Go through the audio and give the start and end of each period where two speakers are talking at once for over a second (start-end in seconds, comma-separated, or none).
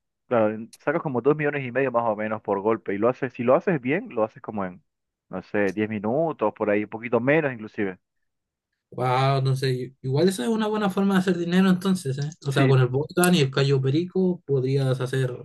none